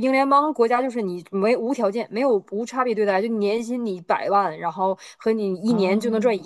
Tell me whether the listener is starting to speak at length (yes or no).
no